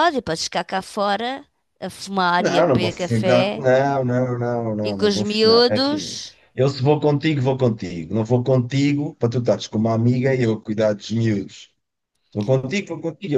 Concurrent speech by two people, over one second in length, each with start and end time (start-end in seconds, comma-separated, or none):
2.4-3.6, 4.8-6.4